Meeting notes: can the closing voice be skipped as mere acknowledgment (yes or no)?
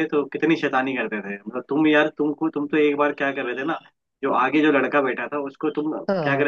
yes